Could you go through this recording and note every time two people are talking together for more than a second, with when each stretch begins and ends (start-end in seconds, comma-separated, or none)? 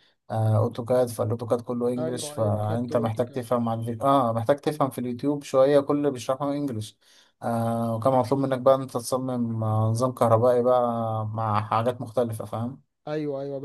2.0-3.4